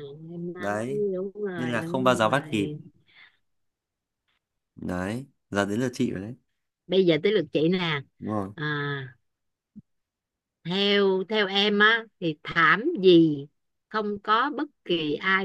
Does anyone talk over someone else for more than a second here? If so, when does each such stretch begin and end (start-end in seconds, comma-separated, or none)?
1.6-2.8